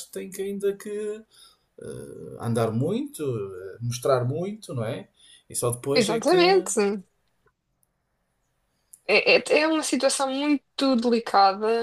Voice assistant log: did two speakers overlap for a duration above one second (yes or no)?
no